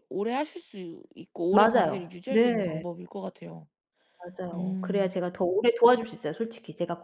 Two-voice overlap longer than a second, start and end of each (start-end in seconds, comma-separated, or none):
1.5-2.8